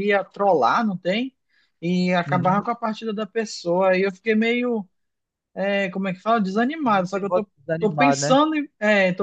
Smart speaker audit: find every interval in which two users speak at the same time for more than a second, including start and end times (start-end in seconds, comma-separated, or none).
6.9-8.4